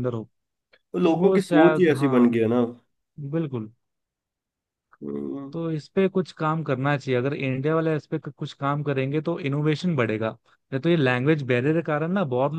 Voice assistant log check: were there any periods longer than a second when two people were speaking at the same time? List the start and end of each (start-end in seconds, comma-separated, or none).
1.0-2.4